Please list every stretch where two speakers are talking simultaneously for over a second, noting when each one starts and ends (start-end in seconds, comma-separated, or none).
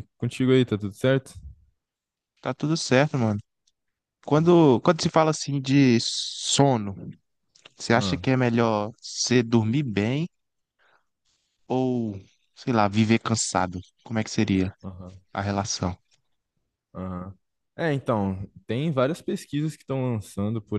none